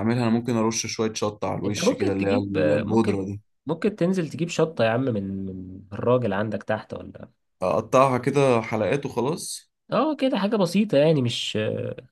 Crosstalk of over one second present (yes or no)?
yes